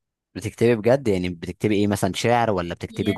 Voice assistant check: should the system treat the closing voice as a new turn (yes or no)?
yes